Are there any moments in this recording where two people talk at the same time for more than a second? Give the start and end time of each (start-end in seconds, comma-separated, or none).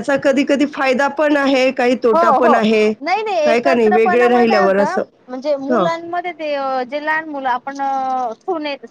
3.5-5.0